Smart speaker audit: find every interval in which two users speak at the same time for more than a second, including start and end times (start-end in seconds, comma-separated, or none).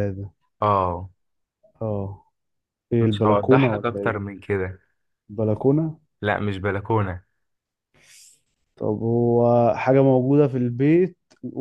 3.0-4.2